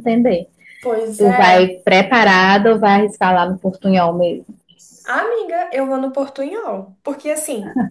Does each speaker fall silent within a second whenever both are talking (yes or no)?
yes